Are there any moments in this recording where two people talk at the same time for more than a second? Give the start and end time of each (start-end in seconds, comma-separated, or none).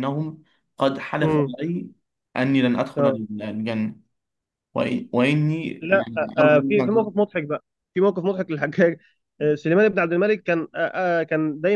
5.8-7.2